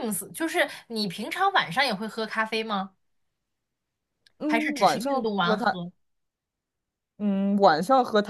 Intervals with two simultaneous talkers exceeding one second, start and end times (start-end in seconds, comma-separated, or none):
4.5-5.8